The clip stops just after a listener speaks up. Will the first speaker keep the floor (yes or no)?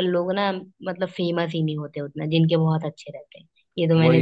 no